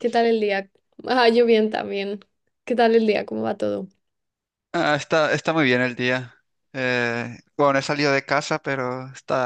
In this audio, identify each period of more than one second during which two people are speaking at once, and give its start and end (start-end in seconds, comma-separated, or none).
none